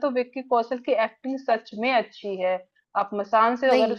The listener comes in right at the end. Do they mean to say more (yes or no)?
no